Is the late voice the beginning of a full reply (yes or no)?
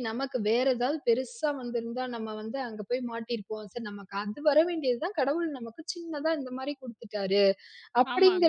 yes